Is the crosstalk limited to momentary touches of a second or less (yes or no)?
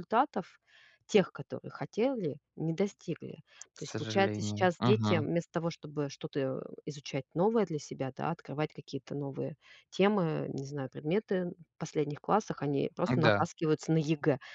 no